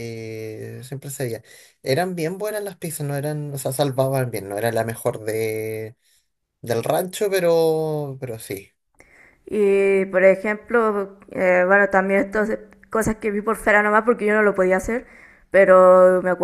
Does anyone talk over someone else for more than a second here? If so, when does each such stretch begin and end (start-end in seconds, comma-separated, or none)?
none